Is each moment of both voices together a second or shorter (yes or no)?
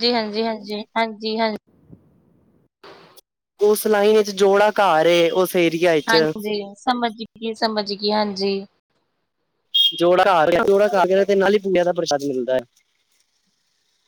yes